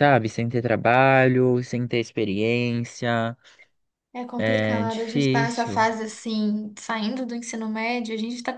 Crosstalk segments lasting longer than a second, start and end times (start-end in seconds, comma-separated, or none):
4.3-5.8